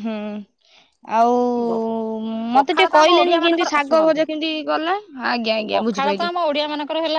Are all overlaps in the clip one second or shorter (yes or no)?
no